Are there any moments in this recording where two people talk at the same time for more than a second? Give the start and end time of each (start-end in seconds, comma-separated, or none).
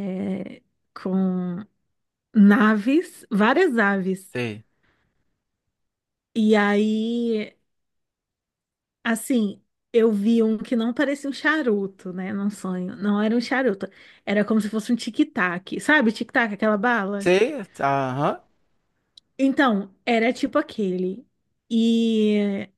none